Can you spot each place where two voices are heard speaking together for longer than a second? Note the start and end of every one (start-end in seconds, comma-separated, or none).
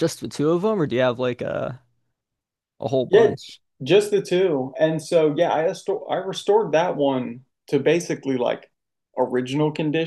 none